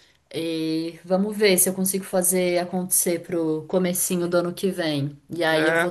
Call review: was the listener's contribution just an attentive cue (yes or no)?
yes